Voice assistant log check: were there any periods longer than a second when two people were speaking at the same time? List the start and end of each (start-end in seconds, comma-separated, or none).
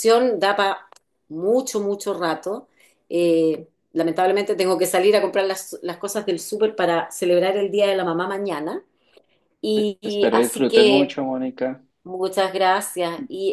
9.7-11.1